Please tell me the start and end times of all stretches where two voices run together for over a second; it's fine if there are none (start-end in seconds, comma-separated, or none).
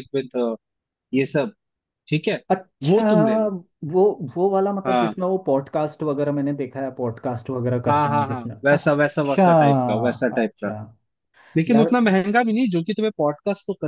7.9-9.5